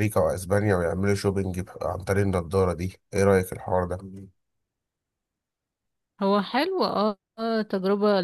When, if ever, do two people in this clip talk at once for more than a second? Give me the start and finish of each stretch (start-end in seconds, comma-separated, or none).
none